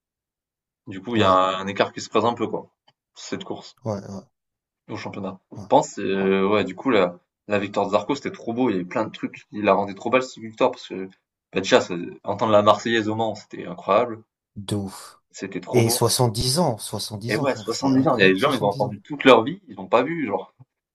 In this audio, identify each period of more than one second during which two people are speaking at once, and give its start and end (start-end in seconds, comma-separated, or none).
17.3-19.0